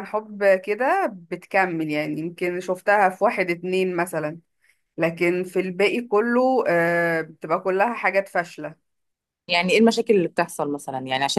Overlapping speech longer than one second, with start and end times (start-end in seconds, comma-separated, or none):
none